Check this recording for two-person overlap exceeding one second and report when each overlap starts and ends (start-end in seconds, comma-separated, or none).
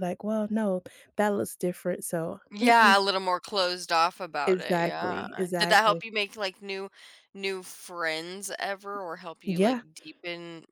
4.5-6.0